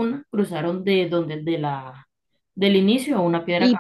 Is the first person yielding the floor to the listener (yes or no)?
yes